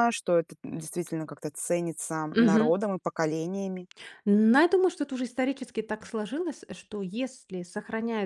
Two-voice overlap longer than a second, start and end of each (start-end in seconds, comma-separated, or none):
none